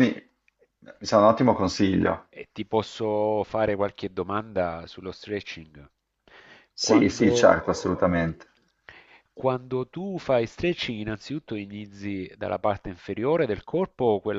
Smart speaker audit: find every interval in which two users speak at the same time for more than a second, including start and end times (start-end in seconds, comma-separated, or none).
6.8-8.2